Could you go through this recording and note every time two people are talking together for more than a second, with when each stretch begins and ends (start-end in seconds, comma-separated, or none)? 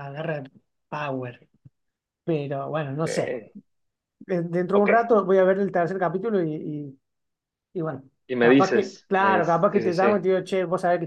8.4-10.2